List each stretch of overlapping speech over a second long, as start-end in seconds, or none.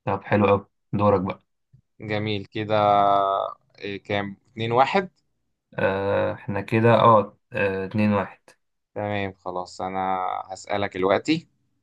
none